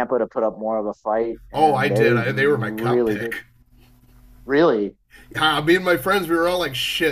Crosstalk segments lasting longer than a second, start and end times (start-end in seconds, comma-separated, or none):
1.5-3.3